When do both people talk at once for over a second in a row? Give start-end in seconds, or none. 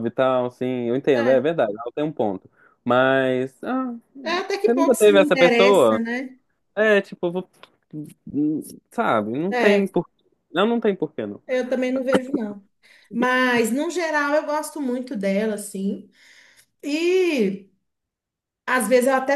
4.6-6.0